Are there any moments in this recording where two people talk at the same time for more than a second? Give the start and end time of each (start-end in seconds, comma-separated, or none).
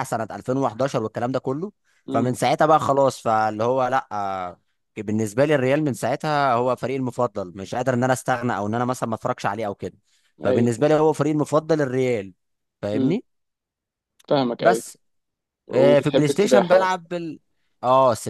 15.7-17.0